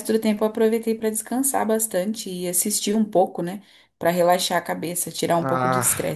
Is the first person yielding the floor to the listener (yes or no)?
yes